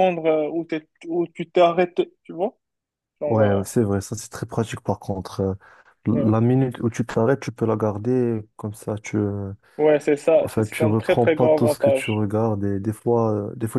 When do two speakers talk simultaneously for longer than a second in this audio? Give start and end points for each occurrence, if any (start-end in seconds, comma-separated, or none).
10.4-12.3